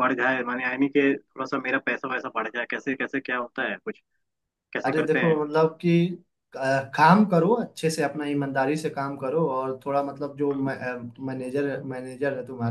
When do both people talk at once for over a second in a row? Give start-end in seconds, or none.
none